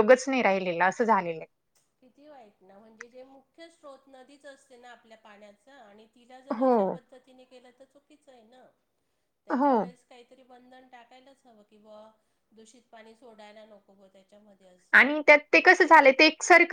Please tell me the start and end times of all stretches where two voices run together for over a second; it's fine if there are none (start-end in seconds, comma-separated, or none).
none